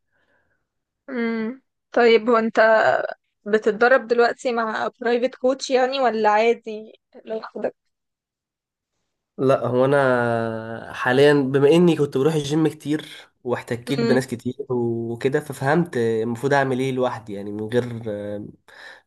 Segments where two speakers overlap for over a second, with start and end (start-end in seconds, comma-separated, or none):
none